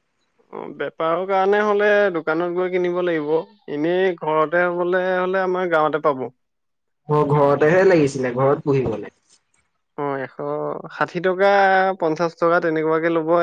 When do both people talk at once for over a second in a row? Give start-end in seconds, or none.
none